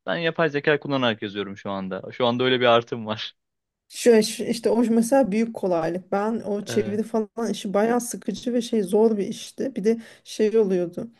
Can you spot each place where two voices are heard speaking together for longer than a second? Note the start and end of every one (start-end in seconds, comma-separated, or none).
none